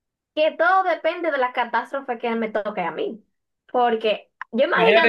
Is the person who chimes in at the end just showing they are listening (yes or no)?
no